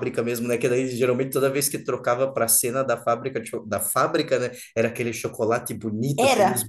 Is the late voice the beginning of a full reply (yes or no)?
no